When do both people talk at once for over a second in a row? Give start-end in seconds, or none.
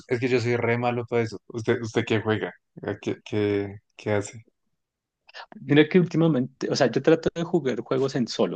none